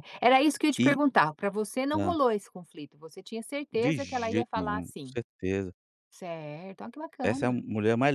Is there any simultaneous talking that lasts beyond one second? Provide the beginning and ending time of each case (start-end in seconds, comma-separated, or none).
3.7-5.2